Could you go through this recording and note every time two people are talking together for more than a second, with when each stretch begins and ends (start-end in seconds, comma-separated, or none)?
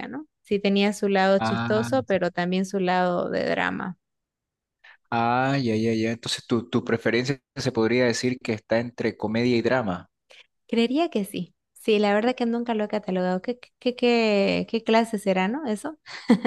none